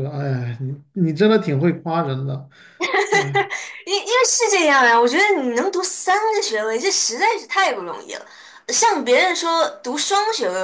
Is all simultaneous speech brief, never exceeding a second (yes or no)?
yes